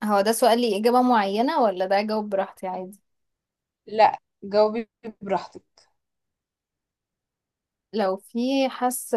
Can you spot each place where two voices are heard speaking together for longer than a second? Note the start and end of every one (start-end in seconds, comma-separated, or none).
none